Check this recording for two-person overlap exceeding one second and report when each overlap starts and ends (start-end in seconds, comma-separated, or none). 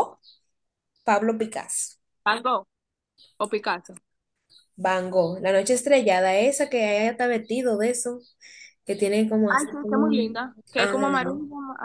9.5-10.9